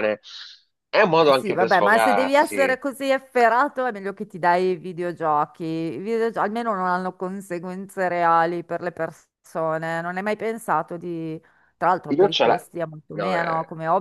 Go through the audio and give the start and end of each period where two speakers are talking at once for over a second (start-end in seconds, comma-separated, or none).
1.1-2.8